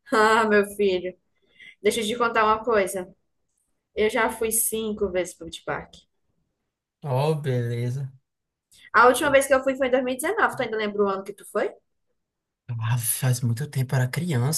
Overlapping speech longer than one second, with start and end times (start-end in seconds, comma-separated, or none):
none